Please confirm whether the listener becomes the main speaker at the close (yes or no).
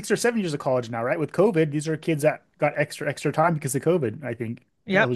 yes